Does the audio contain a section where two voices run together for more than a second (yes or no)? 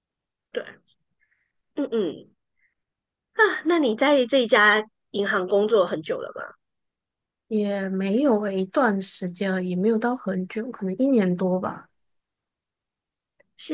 no